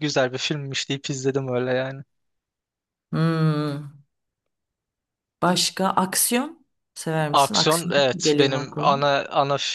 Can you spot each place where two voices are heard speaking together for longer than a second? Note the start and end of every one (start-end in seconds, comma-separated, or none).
7.3-9.1